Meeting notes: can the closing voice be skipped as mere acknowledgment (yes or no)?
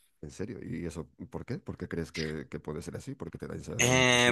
no